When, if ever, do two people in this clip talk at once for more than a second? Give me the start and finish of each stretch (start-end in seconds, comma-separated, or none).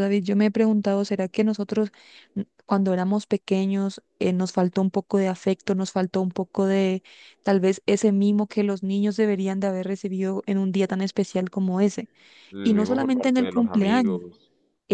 12.6-14.2